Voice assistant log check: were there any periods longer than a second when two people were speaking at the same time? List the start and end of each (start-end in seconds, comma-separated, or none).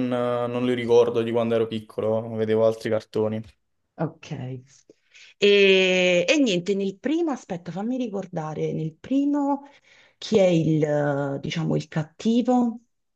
none